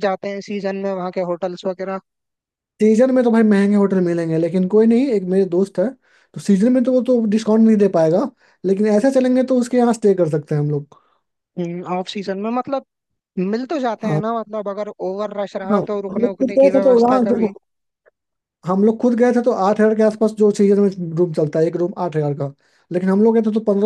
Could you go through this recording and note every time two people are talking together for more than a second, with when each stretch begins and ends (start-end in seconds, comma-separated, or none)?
15.7-17.5